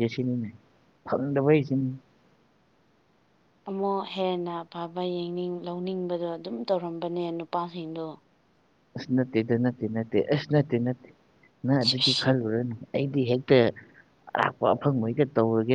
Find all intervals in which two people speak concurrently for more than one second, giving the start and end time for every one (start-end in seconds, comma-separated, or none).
none